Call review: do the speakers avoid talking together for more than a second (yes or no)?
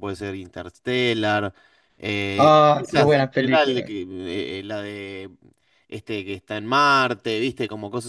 no